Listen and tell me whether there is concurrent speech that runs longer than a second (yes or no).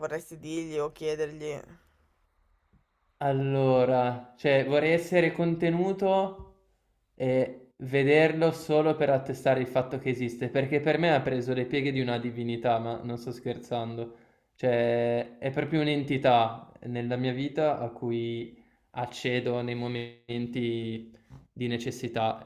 no